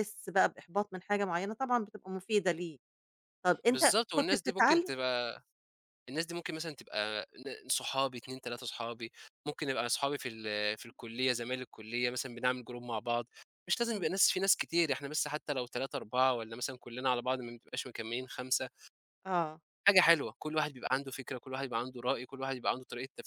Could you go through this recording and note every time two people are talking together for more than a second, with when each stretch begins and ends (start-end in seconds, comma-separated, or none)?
3.7-4.9